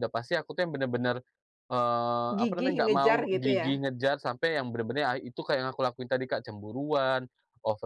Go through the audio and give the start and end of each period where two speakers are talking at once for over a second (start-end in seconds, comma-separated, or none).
2.4-3.9